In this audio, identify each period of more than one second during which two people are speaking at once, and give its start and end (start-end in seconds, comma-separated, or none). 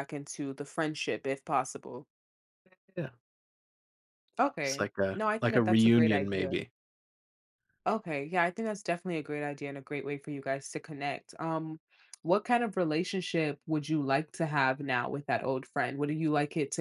4.6-6.5